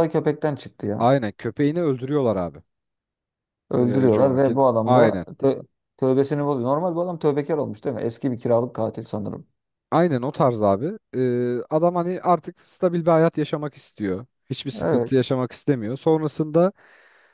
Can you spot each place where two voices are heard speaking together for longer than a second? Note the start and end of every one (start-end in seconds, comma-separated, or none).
3.8-5.2